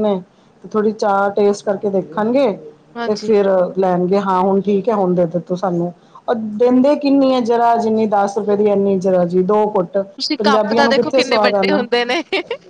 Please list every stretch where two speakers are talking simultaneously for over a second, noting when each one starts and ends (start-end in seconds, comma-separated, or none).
10.4-11.8